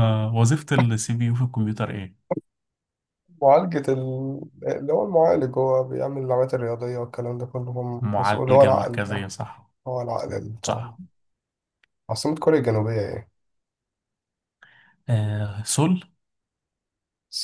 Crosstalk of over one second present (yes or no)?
yes